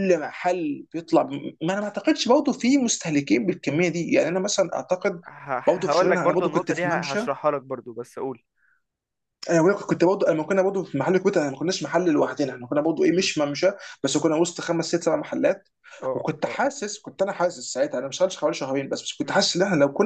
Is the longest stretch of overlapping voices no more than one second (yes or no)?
no